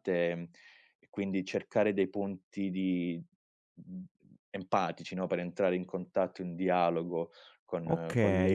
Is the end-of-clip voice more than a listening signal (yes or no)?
yes